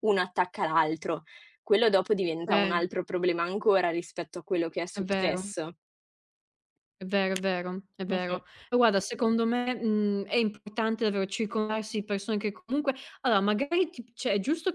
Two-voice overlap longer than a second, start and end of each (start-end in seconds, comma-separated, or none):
none